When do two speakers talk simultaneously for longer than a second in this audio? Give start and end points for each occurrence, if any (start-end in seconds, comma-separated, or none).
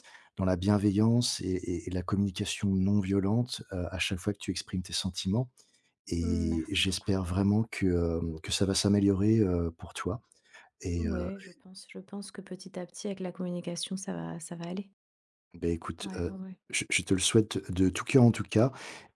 6.2-7.4